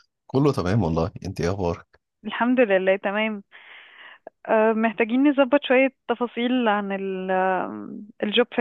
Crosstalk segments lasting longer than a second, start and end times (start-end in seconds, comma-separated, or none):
none